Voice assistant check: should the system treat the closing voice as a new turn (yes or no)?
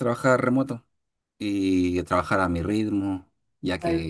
no